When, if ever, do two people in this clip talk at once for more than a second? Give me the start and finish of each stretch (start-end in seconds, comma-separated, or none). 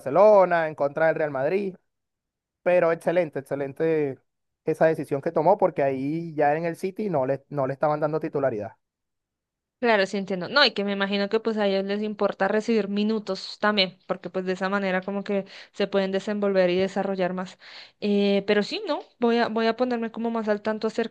none